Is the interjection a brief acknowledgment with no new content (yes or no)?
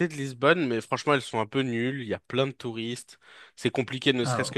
yes